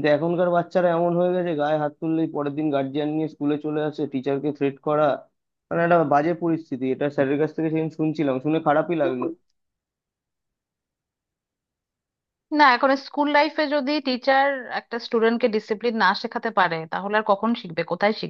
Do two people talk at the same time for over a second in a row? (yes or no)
no